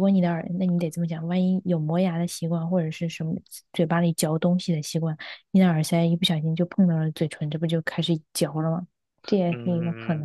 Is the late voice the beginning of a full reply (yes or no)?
yes